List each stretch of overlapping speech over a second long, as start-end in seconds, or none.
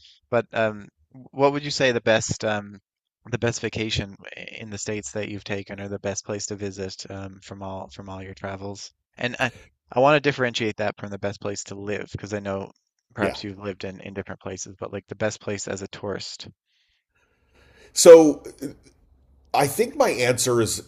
none